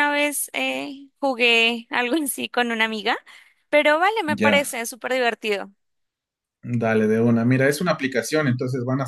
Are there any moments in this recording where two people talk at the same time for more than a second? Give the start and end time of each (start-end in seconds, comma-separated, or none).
none